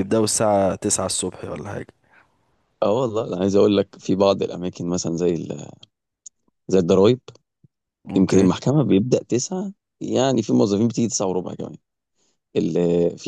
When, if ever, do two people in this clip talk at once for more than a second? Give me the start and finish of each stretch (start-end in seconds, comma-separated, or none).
none